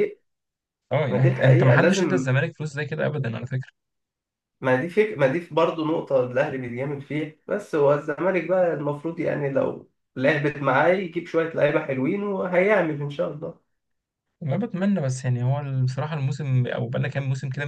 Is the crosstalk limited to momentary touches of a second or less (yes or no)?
no